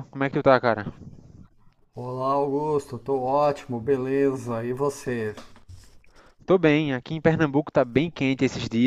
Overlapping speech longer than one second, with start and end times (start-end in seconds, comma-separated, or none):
none